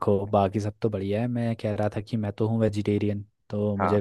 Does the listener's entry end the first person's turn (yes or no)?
no